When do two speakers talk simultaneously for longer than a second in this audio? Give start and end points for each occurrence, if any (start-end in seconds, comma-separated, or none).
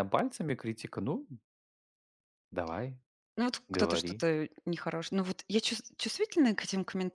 none